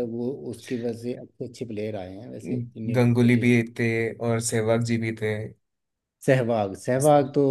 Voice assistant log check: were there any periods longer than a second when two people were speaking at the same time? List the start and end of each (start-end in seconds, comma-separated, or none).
none